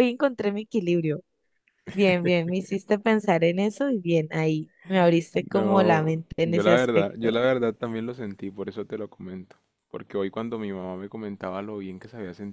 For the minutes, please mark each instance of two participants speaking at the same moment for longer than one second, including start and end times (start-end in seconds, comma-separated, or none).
5.3-7.3